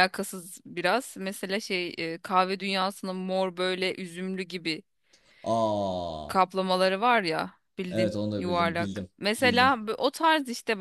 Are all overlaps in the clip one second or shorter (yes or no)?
no